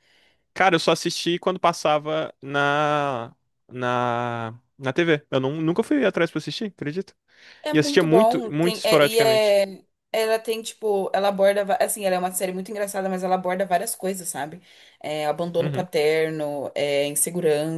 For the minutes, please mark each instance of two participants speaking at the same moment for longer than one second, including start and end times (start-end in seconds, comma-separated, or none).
7.7-9.6